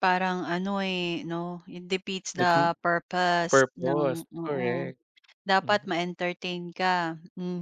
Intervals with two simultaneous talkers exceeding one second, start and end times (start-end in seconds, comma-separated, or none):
3.5-4.9